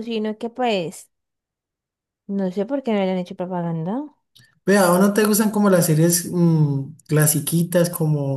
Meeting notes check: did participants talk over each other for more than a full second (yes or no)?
no